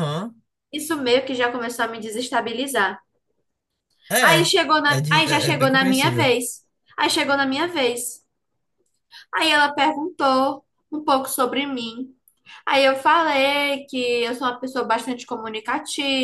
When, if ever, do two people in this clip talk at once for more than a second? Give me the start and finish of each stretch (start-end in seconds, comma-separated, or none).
4.3-6.3